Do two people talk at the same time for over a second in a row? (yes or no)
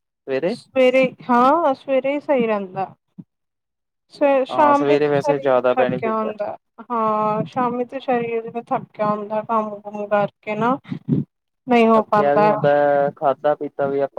yes